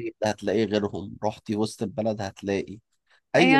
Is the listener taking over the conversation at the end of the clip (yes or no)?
yes